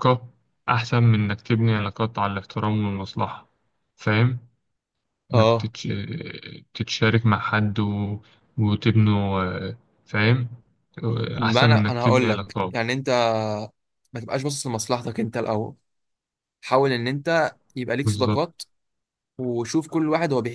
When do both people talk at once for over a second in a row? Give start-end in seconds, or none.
11.4-12.7